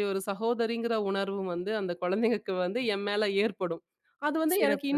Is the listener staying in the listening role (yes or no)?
yes